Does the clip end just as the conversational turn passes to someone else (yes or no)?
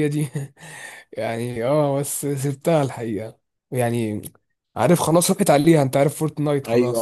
yes